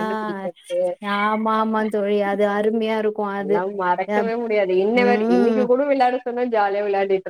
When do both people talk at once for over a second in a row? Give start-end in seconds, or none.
none